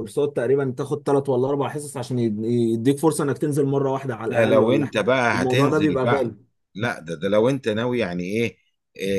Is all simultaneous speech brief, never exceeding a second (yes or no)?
no